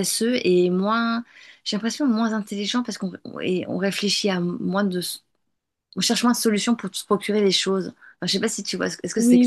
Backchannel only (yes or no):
no